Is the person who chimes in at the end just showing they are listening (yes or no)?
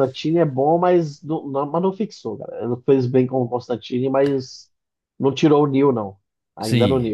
no